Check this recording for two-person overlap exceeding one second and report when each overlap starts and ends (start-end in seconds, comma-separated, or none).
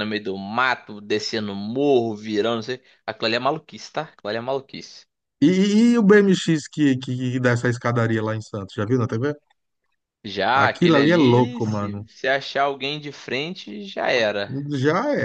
10.5-12.1